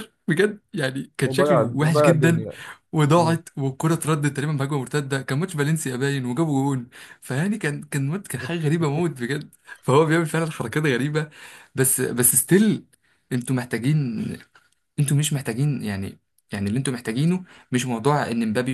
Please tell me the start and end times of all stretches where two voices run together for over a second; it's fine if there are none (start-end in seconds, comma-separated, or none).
1.2-2.5